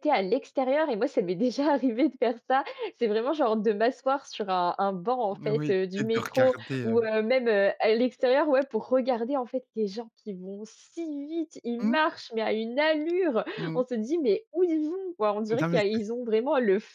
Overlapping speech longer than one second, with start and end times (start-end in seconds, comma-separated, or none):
5.3-7.0